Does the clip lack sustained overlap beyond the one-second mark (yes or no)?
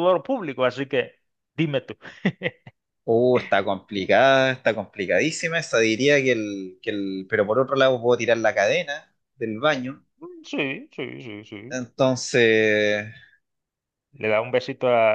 yes